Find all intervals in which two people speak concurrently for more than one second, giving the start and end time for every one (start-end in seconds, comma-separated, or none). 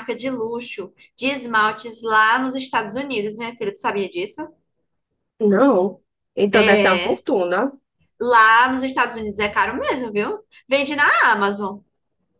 none